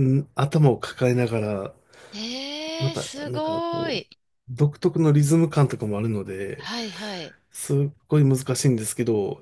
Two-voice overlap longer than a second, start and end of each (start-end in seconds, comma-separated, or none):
2.8-4.1